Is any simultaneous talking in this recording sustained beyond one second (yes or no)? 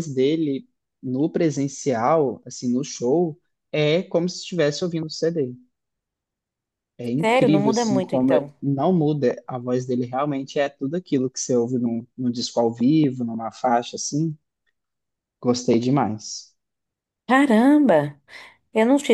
yes